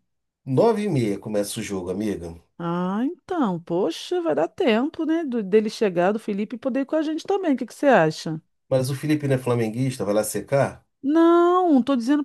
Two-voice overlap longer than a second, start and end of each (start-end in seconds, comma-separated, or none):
none